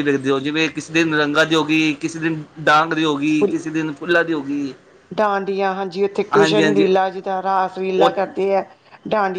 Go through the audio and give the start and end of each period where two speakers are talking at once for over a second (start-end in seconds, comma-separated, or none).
none